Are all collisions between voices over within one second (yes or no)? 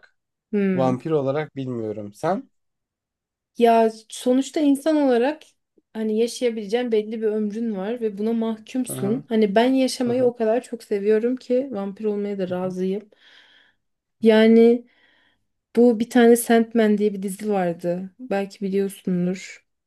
yes